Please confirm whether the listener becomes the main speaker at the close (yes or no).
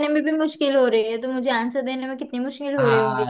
yes